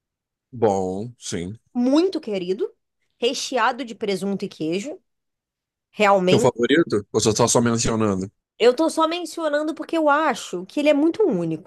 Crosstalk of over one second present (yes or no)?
no